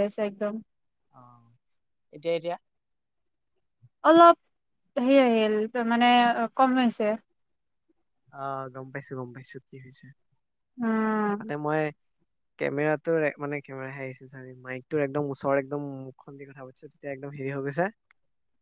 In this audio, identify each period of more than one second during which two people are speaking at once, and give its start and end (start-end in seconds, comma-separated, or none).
none